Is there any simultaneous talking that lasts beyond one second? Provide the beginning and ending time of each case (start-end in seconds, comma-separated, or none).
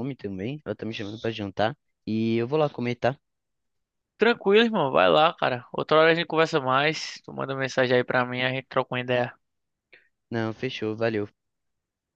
none